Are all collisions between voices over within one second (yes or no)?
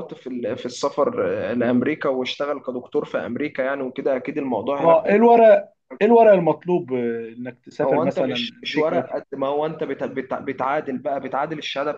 no